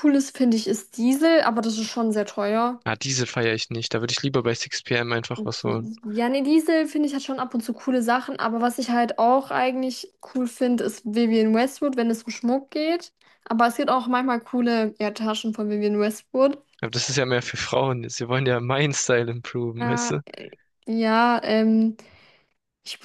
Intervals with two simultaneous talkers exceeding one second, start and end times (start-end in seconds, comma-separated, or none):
none